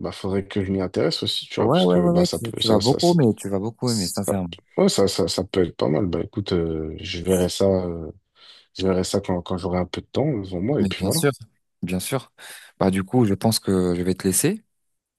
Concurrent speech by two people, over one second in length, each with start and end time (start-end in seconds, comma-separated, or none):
1.6-3.2